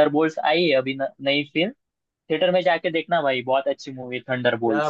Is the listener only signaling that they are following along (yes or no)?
no